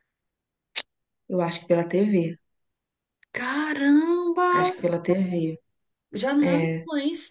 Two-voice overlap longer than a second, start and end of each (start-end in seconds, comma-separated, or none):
none